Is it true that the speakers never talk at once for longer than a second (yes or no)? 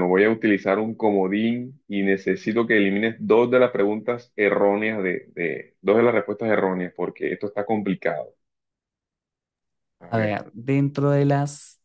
yes